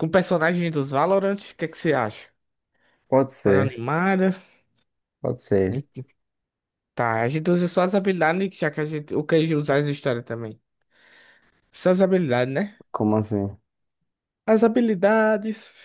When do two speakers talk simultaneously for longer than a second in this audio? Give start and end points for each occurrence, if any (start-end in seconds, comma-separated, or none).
none